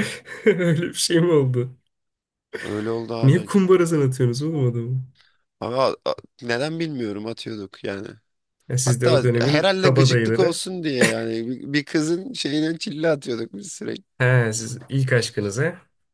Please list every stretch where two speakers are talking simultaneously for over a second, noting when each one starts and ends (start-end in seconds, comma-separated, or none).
8.8-10.6